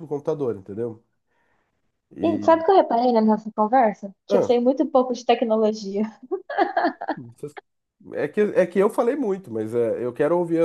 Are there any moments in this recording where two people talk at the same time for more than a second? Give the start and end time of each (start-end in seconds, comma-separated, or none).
none